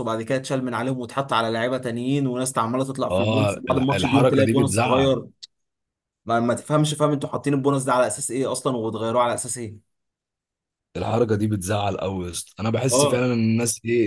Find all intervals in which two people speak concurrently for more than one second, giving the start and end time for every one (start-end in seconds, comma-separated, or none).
3.1-5.2